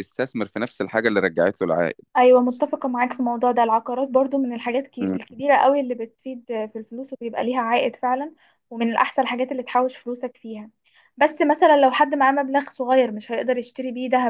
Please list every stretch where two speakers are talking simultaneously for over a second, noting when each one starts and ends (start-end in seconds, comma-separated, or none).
none